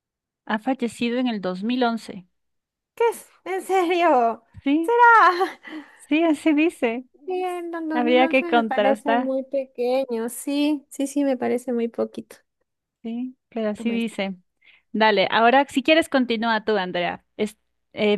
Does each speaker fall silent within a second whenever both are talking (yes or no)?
no